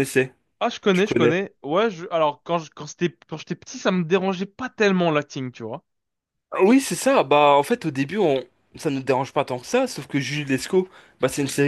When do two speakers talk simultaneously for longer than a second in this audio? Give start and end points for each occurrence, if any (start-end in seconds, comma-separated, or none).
none